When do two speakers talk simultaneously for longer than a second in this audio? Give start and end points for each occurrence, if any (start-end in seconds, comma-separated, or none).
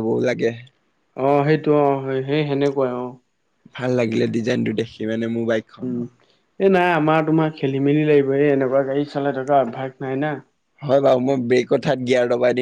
none